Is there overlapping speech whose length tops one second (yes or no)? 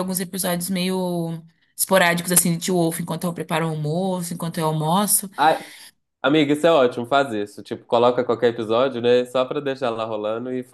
no